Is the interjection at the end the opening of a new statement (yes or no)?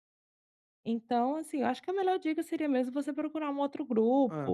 no